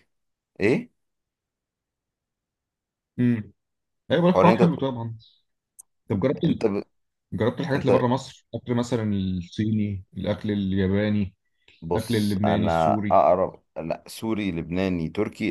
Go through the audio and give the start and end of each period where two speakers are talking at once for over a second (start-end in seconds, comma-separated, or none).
11.9-13.2